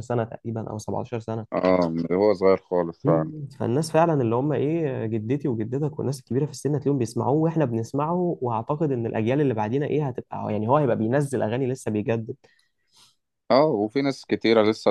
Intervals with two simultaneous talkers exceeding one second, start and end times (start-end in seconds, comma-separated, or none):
none